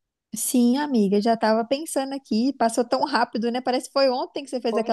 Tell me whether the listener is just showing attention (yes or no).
no